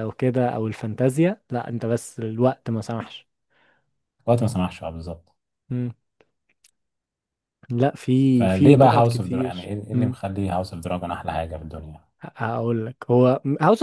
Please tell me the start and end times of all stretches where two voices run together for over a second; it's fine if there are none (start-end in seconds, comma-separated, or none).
8.3-10.2